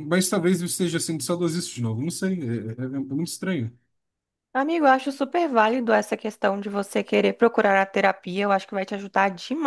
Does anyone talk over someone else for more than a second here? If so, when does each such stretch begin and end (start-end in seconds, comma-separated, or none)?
none